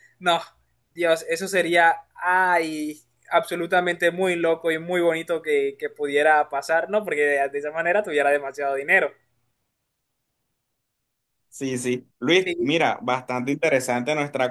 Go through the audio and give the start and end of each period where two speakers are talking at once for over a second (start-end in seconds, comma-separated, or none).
none